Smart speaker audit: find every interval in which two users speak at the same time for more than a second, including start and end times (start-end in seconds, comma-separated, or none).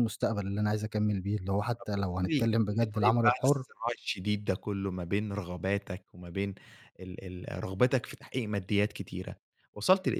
1.8-3.7